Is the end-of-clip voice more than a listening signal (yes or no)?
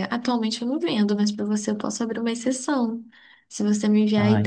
no